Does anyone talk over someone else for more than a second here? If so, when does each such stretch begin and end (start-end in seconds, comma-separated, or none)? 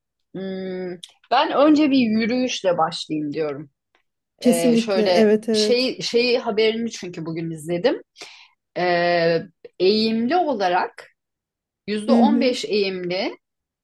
4.4-6.0